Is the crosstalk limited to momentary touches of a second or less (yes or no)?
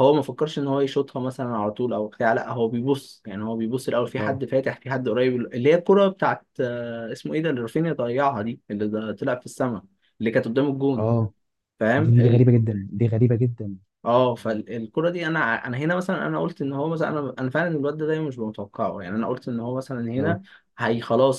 yes